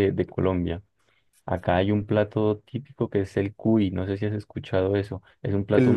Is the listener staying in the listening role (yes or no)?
yes